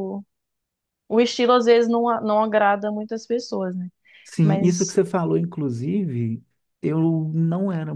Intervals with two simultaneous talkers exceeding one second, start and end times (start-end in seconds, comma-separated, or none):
none